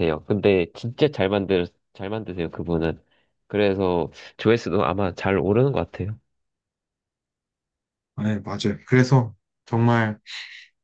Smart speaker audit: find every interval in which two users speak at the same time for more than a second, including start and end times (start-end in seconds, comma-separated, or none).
none